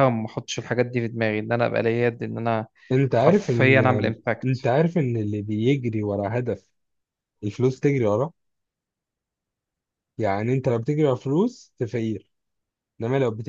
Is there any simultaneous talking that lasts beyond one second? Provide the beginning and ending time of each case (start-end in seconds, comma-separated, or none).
3.1-4.7